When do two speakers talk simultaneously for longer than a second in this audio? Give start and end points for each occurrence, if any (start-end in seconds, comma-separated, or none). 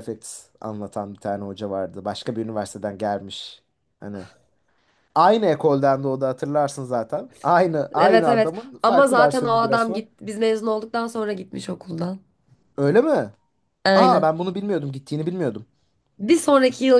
8.0-10.1